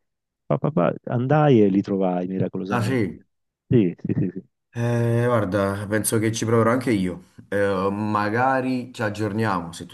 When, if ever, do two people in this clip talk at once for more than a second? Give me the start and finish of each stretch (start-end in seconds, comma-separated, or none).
none